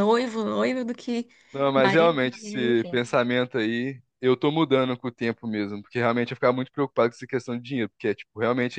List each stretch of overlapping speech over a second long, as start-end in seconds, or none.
1.7-3.0